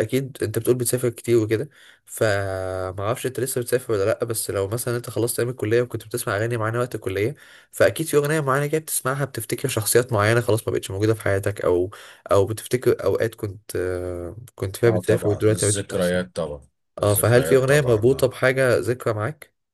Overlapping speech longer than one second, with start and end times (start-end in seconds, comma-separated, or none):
14.9-16.2, 17.0-18.3